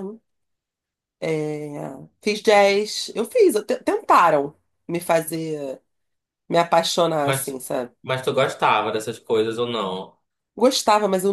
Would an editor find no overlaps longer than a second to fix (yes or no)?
yes